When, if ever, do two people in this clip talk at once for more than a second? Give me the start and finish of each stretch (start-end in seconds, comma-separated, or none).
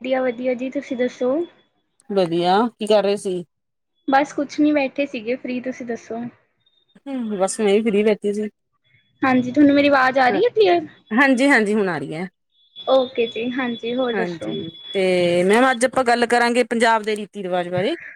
none